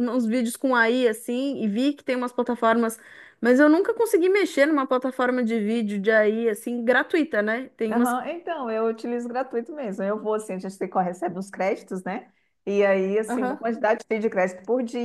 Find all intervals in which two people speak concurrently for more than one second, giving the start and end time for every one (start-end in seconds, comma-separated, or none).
none